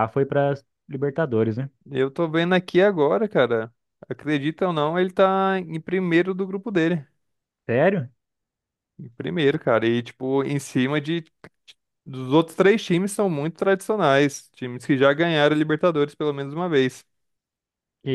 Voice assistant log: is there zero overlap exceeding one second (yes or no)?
yes